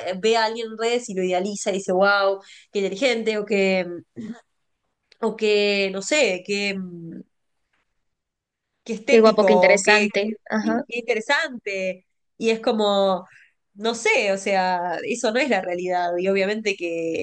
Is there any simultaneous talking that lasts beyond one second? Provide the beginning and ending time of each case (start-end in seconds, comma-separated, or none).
9.1-10.8